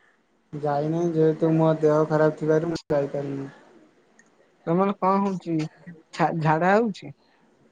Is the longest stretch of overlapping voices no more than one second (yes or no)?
yes